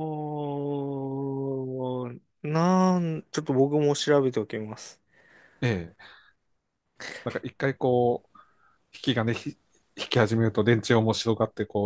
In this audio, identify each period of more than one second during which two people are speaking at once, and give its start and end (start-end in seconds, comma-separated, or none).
none